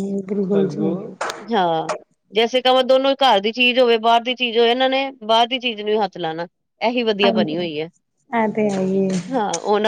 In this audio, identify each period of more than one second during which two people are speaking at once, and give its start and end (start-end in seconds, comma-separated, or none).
none